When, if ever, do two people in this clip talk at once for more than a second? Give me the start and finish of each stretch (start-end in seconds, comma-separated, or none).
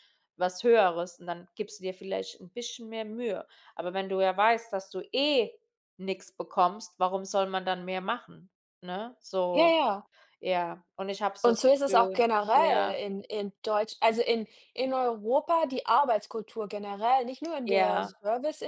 11.4-13.0